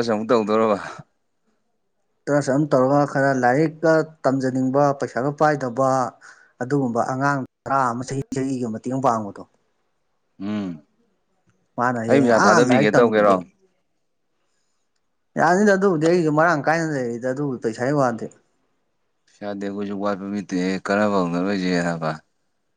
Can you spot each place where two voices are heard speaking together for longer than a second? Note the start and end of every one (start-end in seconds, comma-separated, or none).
12.1-13.3